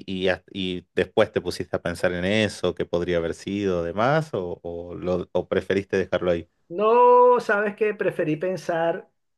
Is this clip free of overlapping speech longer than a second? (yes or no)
yes